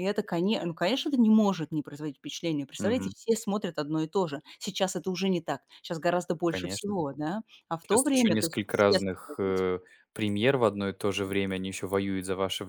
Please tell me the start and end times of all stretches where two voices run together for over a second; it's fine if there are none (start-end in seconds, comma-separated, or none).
7.9-9.6